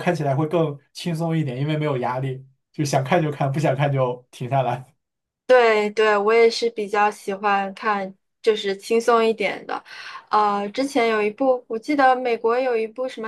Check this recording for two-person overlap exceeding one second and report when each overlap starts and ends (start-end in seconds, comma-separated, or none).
none